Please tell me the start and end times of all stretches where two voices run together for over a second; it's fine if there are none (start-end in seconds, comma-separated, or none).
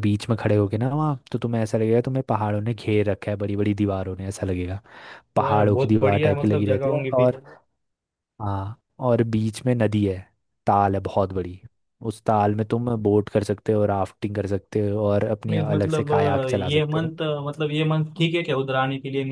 5.4-7.3, 15.5-17.1